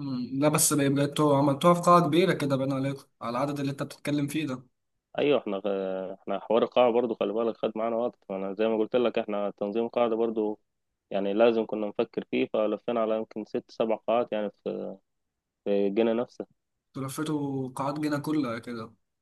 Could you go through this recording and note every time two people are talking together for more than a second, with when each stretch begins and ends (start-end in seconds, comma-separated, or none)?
none